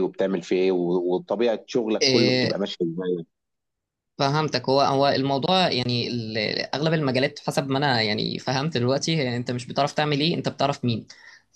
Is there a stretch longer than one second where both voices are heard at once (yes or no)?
no